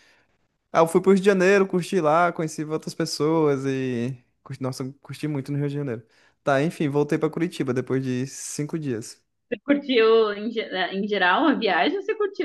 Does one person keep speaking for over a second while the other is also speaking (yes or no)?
no